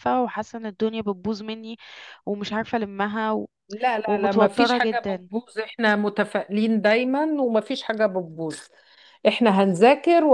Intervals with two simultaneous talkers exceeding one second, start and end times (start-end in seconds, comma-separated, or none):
4.1-5.3